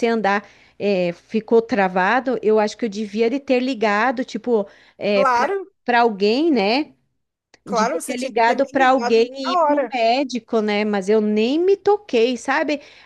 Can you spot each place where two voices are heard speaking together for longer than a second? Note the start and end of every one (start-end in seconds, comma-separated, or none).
7.7-10.0